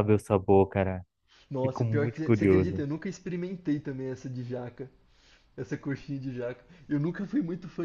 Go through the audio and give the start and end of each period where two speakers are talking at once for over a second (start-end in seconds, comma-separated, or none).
1.6-2.8